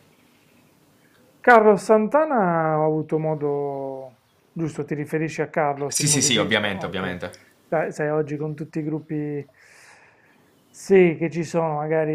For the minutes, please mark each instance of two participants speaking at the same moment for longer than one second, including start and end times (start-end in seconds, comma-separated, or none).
5.8-7.2